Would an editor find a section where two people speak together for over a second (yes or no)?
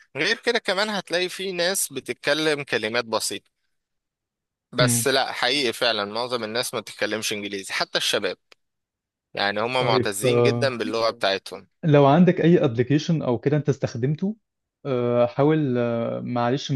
no